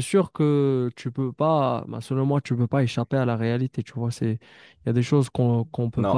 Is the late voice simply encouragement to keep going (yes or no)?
yes